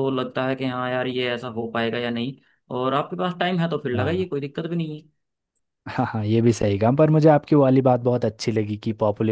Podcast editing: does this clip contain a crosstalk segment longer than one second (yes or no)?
no